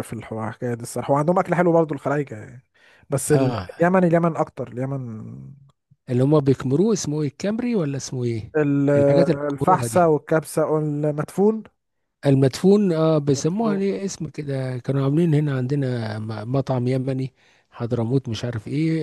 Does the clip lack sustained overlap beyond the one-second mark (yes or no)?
yes